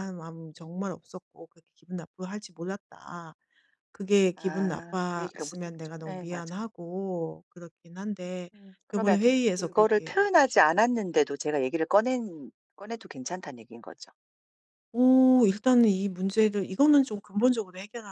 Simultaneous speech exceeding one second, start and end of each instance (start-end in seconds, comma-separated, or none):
4.3-6.6, 8.9-10.3